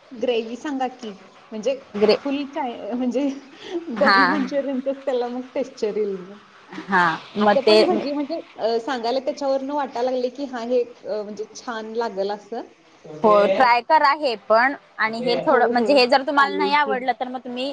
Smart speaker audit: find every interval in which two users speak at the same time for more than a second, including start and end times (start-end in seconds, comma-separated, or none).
15.5-16.9